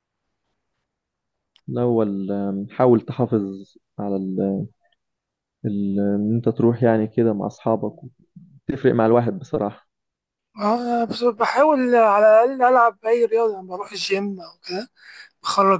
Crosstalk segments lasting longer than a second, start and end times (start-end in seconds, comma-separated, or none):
none